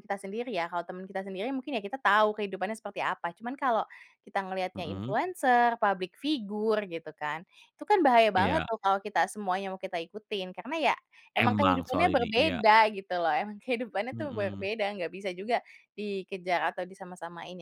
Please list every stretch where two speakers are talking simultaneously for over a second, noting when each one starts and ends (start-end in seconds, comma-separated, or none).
11.4-12.6